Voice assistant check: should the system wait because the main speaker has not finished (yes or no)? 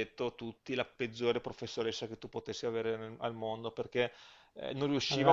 yes